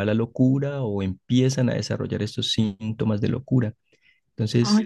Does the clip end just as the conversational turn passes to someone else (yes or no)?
no